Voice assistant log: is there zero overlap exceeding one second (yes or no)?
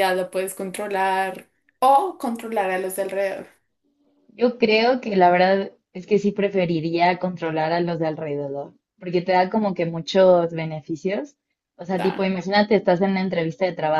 yes